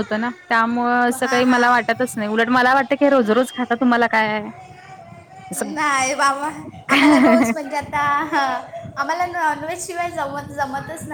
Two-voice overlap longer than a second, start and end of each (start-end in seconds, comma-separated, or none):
none